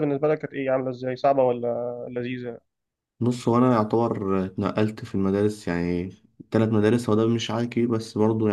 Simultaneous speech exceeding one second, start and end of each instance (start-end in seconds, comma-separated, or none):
none